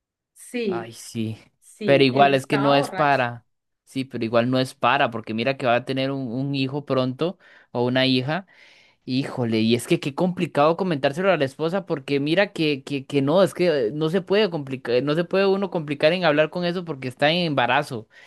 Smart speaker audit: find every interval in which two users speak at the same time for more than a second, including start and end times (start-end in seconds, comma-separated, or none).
1.8-3.2